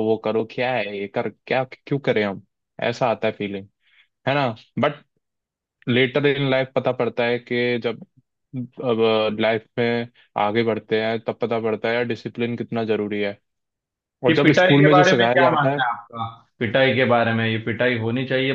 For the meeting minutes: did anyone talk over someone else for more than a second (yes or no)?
yes